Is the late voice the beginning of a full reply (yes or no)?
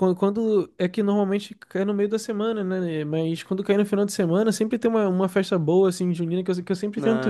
yes